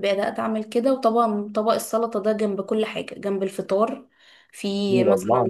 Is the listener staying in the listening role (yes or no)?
yes